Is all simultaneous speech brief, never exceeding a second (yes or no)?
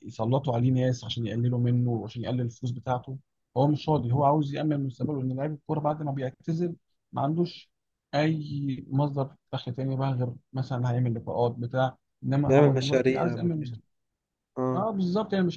no